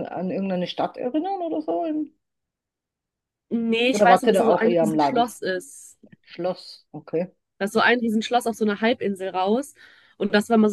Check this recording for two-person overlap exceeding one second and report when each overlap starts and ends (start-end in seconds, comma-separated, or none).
3.9-5.3